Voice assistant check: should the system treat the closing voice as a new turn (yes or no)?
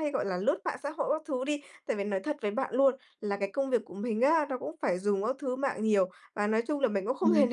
no